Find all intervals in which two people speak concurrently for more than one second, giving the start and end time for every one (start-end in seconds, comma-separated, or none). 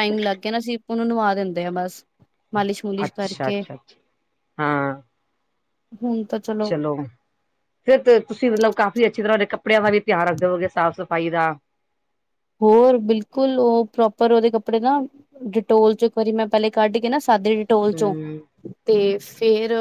none